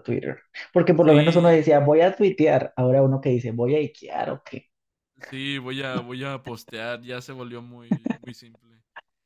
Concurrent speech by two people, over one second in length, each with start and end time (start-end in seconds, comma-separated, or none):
none